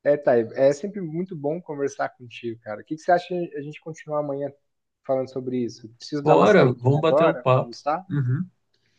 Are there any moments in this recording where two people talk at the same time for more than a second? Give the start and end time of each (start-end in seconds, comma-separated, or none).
6.2-8.0